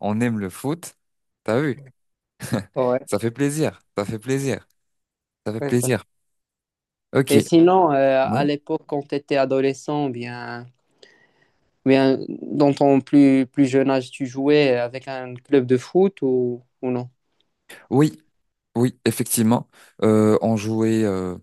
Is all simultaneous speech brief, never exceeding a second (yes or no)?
yes